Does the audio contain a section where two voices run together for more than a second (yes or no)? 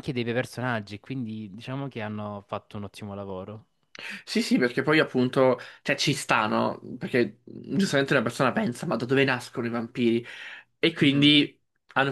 no